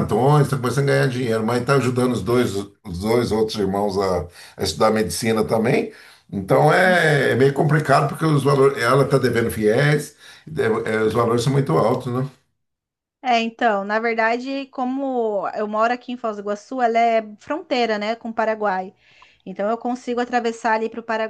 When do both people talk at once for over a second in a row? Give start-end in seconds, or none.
none